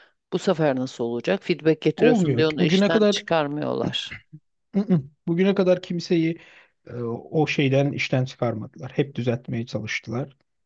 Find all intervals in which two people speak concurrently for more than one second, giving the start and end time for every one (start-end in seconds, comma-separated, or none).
2.0-3.2